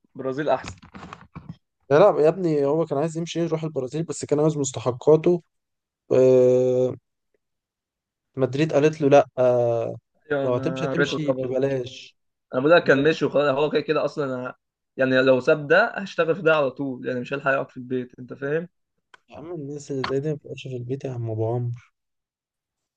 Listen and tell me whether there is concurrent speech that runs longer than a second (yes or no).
yes